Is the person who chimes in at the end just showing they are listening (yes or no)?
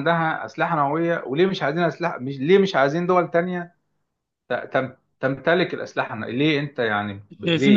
no